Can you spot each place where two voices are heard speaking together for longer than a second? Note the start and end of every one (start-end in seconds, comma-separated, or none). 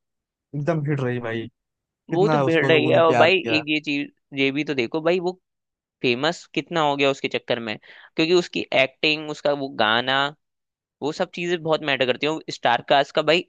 2.1-3.6